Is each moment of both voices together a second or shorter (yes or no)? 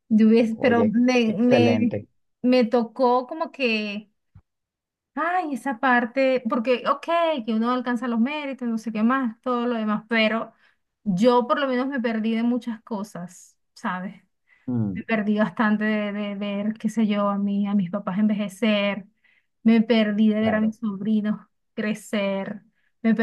no